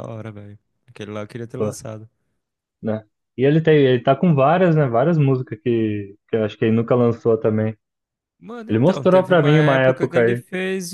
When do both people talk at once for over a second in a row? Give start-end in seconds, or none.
8.7-10.4